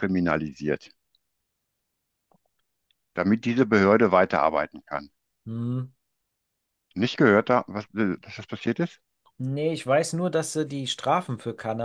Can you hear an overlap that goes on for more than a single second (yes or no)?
no